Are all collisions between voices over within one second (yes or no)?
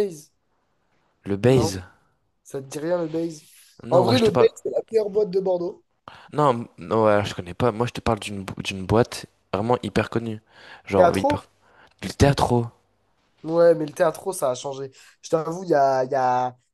yes